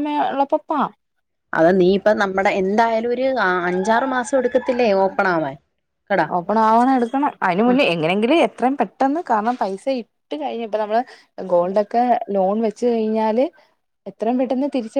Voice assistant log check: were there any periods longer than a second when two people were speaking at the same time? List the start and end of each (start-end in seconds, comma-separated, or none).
none